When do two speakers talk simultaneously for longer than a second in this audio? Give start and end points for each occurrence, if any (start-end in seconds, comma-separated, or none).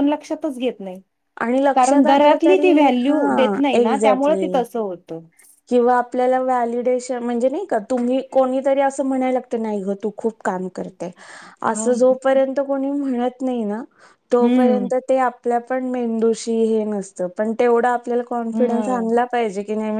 1.8-4.6